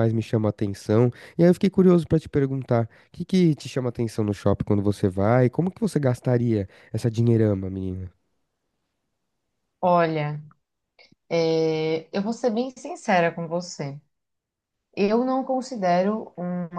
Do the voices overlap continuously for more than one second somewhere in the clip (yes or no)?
no